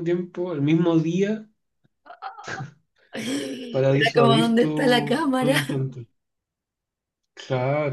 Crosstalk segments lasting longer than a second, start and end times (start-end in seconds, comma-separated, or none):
3.7-5.5